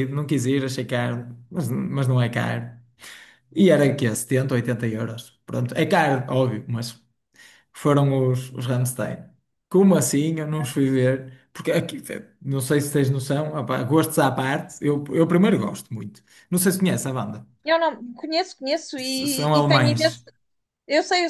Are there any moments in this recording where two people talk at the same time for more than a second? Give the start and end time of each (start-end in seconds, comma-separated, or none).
19.0-20.2